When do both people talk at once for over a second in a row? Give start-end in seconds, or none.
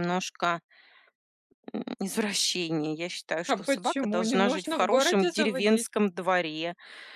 3.5-5.9